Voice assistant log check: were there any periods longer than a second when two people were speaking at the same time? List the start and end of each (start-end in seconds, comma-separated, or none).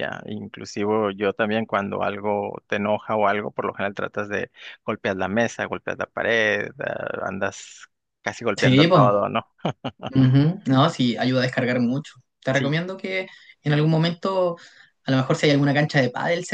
none